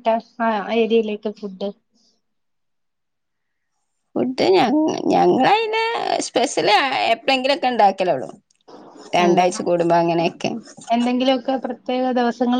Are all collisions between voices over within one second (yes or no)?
yes